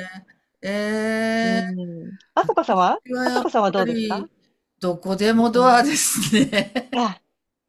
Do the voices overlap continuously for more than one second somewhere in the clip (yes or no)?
yes